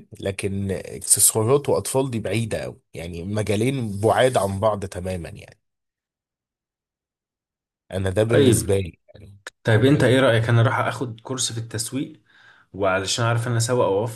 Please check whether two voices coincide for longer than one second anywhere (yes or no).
no